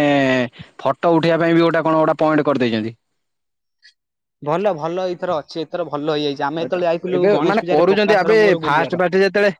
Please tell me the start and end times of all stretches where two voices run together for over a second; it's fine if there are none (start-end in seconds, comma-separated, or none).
6.7-8.9